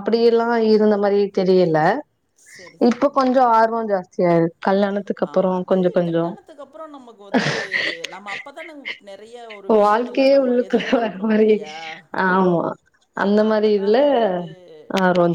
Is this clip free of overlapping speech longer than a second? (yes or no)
yes